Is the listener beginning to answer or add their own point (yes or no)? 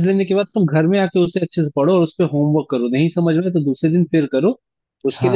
no